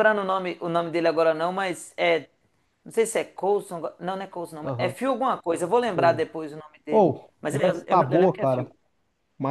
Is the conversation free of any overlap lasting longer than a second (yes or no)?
no